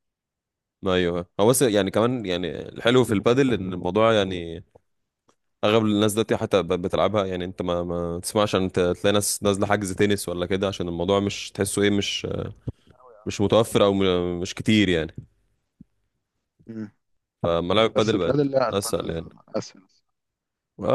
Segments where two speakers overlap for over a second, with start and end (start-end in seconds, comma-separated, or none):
17.9-19.3